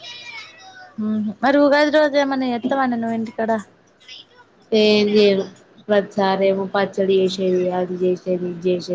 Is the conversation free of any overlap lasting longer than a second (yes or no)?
yes